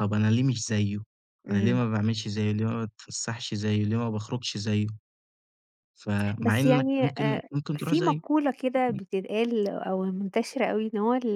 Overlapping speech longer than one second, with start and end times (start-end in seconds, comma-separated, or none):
6.4-8.2